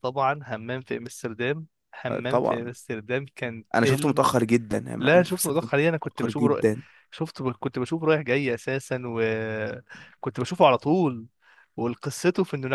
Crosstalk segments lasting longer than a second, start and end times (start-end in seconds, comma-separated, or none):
none